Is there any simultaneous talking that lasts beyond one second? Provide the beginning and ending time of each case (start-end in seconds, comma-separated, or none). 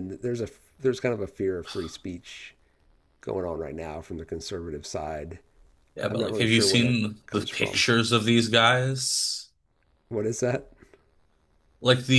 6.1-7.8